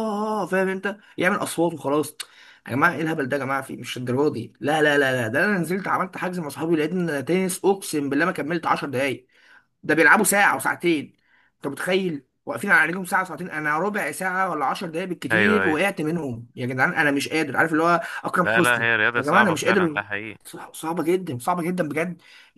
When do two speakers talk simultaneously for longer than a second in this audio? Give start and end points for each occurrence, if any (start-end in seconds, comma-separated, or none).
18.4-20.0